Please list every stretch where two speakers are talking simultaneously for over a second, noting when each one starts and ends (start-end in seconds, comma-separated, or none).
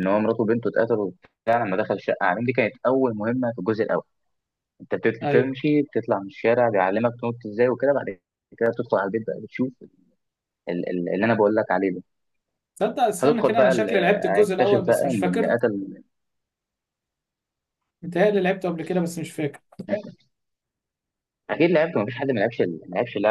13.2-15.6